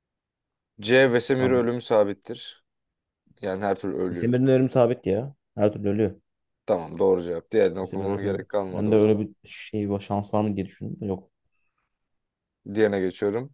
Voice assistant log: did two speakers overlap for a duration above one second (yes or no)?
yes